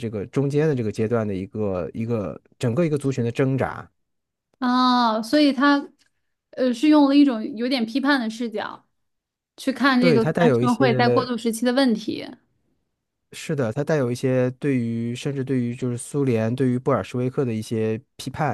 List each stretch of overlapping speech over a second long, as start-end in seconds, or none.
10.0-11.3